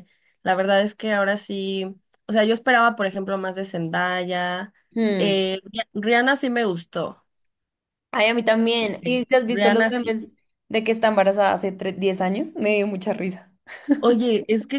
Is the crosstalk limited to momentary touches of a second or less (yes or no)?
no